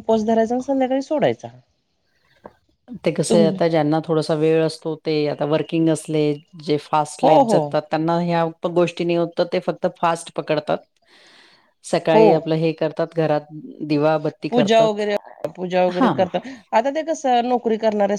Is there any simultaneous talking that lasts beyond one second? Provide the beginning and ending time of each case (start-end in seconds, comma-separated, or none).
none